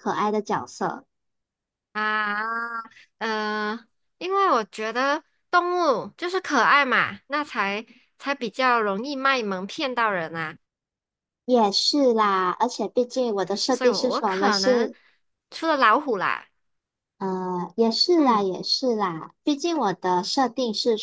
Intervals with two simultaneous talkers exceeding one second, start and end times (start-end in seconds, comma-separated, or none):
13.7-14.9